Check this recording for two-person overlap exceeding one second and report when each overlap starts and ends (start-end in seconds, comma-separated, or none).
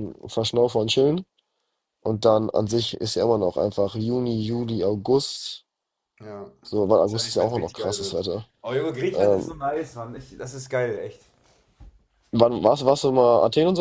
7.0-8.2